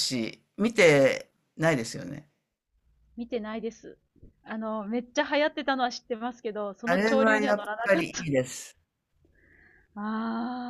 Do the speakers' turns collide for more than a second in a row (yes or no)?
yes